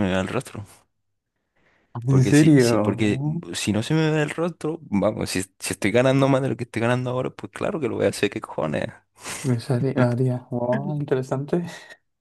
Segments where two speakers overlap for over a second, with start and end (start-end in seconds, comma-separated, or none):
2.1-3.4